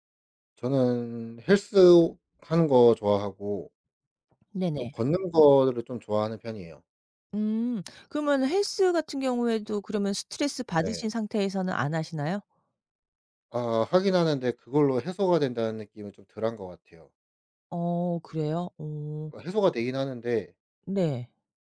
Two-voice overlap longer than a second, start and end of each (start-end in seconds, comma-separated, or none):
none